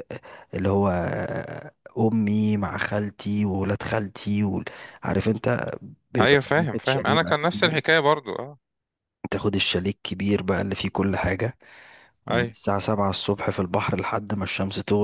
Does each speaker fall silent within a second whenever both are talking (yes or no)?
no